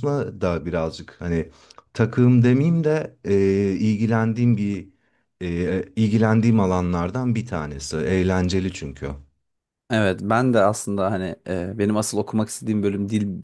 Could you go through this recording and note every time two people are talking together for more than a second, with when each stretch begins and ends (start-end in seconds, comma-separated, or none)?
none